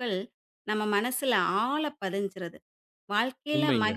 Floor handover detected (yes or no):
no